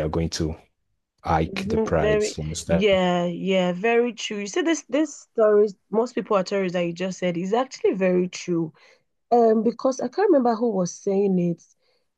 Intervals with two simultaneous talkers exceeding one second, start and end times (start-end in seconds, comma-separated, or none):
1.5-2.9